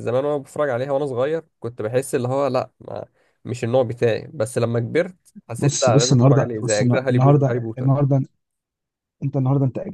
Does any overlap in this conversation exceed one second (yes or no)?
yes